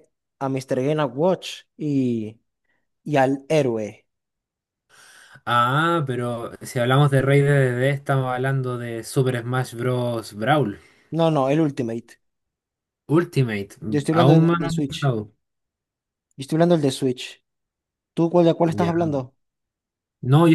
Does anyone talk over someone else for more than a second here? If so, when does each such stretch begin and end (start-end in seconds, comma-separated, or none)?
13.9-15.1